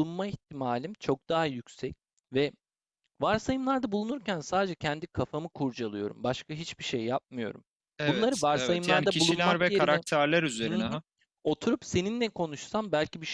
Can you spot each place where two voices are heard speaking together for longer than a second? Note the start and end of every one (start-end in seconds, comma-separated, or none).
8.0-10.0